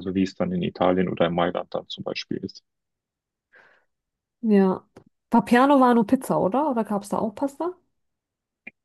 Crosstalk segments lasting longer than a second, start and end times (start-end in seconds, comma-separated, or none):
none